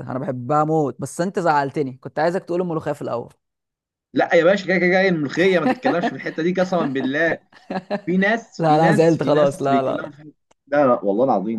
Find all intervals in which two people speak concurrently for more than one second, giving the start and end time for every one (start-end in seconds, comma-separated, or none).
8.6-10.1